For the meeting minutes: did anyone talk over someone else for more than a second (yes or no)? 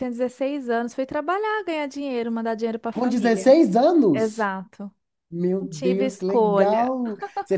yes